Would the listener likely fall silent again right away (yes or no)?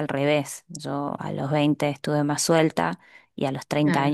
yes